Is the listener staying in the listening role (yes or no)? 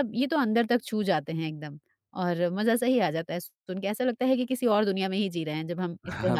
no